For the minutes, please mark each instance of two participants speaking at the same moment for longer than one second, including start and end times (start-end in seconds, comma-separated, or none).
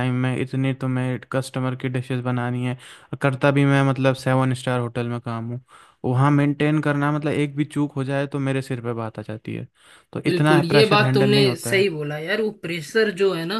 10.2-11.9